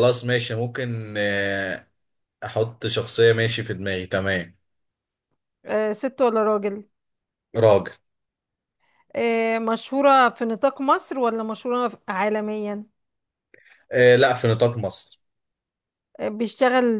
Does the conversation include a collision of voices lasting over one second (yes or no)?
no